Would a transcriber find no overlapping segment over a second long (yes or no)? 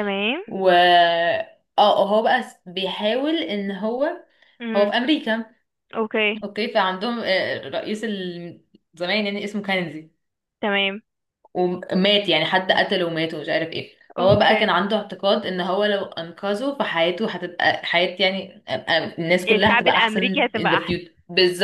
no